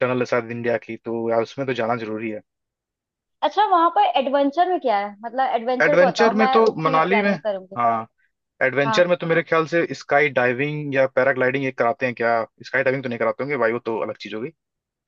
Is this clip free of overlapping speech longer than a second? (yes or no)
no